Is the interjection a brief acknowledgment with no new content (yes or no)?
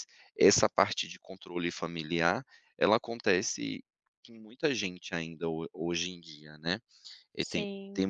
yes